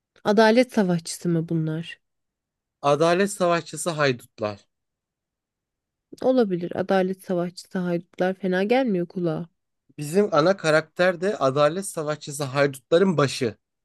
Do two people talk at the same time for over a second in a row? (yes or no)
no